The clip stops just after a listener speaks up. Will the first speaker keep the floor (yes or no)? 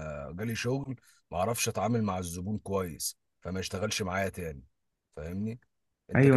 no